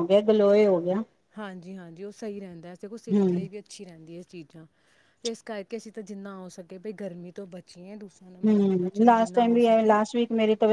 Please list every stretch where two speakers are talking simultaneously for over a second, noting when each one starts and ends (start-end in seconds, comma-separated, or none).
8.4-10.0